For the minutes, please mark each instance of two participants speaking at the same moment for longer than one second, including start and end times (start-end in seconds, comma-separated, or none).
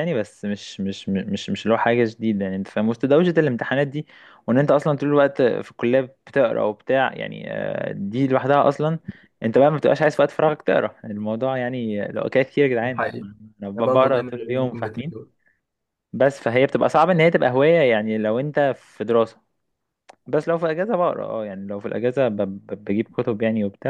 13.8-15.1